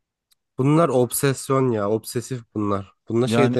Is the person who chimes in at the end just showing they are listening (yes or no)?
yes